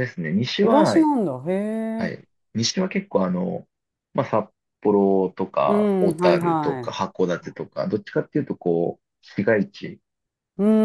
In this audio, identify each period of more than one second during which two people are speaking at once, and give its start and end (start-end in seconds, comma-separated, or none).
5.7-7.1